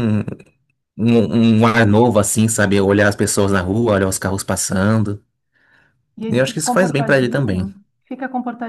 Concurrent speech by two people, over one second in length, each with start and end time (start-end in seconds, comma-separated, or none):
6.3-7.7